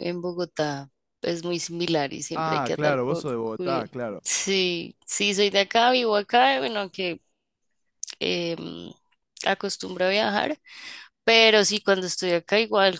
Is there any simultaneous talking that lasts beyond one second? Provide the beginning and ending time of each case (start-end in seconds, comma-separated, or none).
2.3-4.2